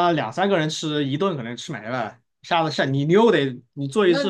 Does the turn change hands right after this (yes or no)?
yes